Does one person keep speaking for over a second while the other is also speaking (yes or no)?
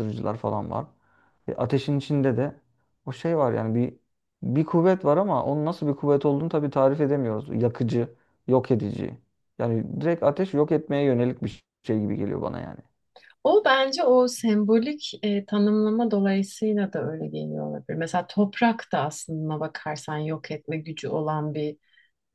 no